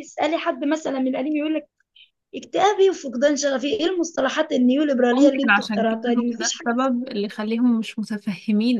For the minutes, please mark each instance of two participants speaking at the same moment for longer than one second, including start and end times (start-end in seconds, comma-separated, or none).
5.2-7.4